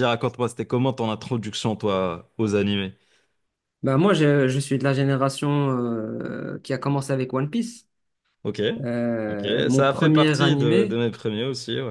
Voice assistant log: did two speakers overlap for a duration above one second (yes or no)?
yes